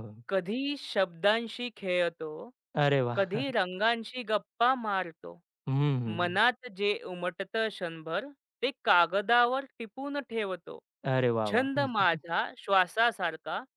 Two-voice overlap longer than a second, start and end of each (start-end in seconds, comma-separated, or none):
none